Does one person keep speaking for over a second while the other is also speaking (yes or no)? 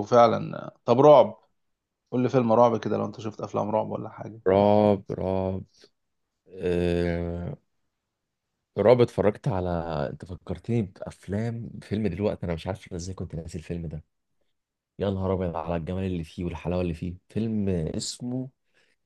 no